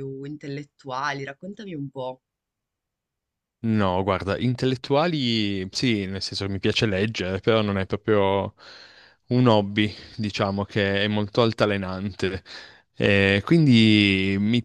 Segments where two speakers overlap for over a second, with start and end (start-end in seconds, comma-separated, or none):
none